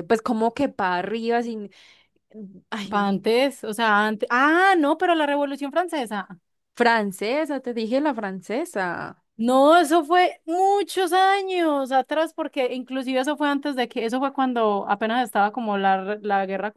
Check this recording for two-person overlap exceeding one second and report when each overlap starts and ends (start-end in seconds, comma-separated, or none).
none